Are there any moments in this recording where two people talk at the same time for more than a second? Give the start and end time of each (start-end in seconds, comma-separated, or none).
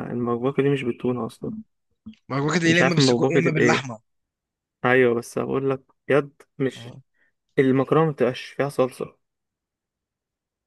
2.6-3.9